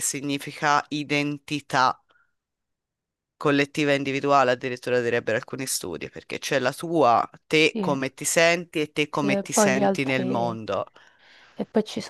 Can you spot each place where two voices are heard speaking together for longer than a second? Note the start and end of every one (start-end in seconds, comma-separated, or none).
9.1-10.6